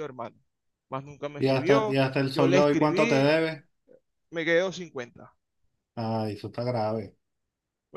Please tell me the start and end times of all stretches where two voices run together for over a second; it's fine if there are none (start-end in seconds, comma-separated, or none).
1.4-3.2